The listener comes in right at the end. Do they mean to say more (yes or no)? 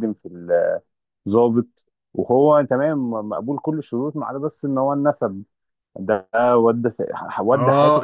yes